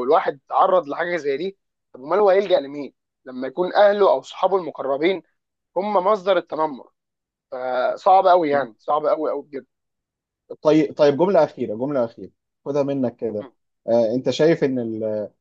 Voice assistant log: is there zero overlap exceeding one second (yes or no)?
yes